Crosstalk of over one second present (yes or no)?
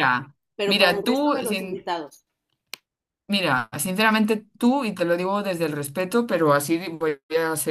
yes